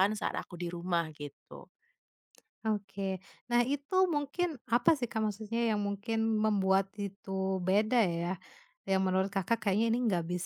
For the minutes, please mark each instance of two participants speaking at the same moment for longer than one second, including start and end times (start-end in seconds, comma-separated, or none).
none